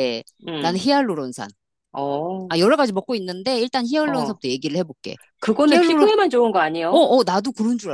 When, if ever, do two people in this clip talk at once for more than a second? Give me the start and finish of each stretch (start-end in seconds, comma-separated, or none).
none